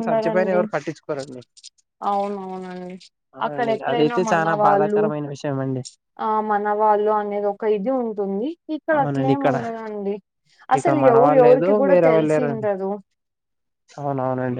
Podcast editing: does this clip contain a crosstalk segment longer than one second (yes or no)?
yes